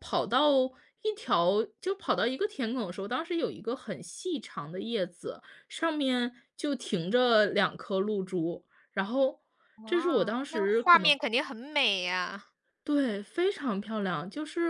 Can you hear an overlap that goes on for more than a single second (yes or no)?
yes